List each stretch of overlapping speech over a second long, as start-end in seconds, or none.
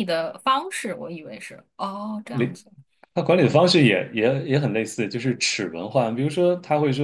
none